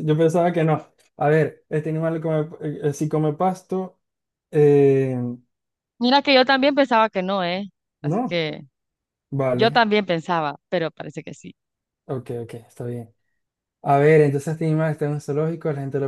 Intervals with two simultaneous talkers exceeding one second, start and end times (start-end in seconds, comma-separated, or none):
none